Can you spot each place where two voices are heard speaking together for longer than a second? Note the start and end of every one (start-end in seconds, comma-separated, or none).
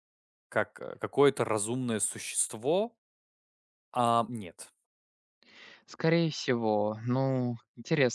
none